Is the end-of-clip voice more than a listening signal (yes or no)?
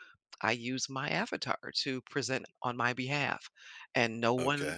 yes